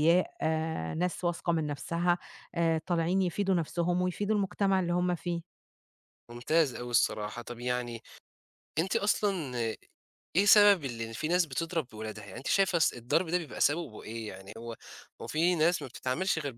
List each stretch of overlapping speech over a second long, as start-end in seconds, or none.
none